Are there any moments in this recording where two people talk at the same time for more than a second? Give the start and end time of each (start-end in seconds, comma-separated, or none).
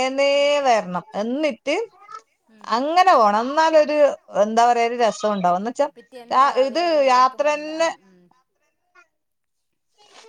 6.0-7.9